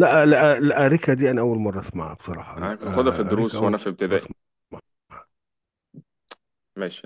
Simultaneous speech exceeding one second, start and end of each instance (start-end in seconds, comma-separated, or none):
2.6-4.3